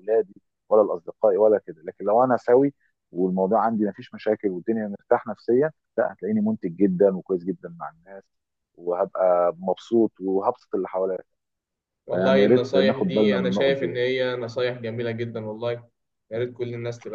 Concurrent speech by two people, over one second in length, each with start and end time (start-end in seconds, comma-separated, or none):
12.1-14.1